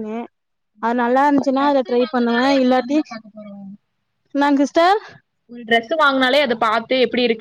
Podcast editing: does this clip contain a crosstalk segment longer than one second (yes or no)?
yes